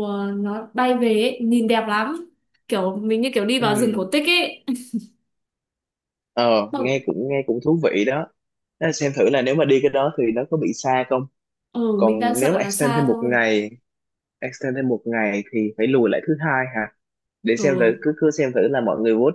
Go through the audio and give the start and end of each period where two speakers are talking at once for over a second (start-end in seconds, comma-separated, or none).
12.0-13.4